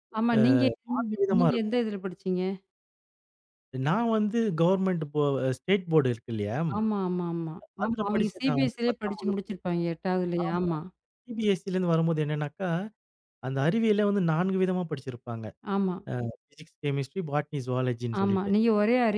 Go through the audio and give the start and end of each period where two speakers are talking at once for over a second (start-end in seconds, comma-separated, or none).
7.8-9.5